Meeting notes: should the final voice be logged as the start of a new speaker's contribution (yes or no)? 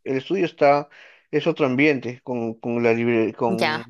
yes